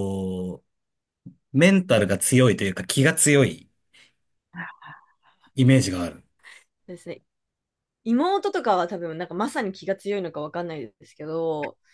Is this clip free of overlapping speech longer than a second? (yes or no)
yes